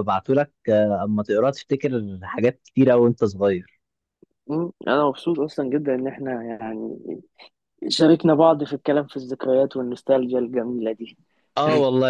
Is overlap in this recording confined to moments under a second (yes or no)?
yes